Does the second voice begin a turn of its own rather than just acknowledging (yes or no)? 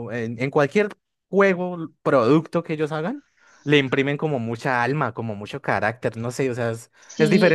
yes